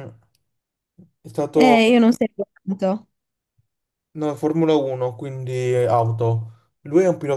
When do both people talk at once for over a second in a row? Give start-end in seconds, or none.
none